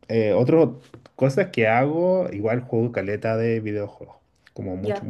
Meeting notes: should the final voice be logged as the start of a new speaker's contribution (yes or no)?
no